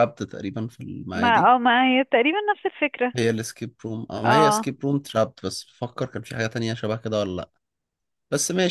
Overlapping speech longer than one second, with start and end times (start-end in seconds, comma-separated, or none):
none